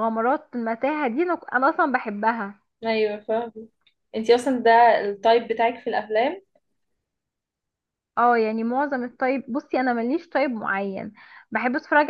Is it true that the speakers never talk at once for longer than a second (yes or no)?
yes